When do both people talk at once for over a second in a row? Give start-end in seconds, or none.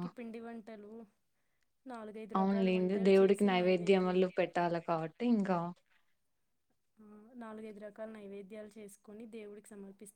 2.8-4.2